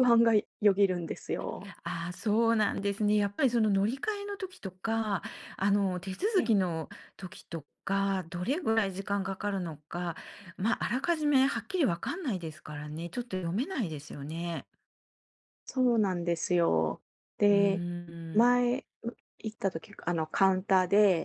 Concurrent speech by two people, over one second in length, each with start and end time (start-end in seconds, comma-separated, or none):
none